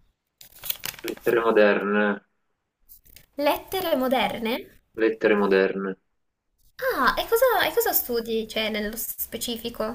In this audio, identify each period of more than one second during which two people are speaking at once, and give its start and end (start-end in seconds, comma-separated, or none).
none